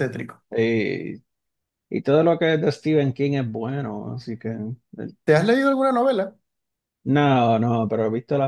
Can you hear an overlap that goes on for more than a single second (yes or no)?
no